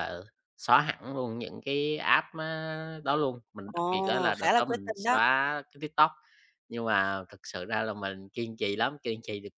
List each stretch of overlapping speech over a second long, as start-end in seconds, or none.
3.6-5.2